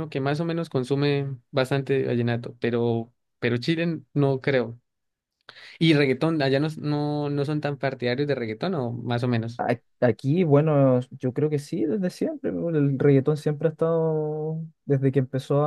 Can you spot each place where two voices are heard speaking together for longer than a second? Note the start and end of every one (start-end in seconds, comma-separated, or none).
none